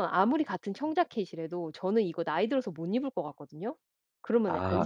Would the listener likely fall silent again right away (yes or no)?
no